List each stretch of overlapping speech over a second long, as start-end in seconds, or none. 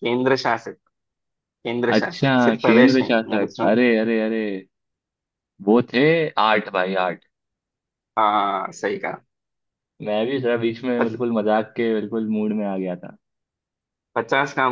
1.9-3.8